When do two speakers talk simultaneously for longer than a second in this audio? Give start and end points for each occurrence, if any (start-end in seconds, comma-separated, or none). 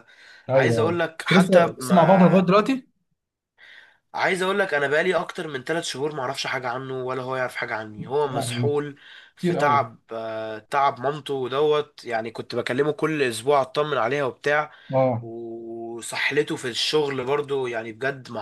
0.5-2.5